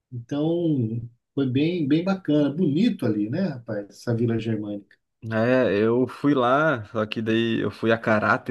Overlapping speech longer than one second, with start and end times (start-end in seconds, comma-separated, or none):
none